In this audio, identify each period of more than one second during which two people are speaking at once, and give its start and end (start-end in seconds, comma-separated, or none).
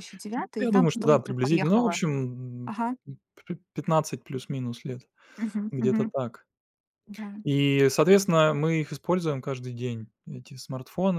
0.6-2.0